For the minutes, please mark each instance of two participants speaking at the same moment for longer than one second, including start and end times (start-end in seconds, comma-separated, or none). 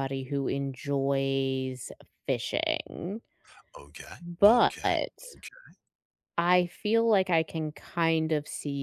none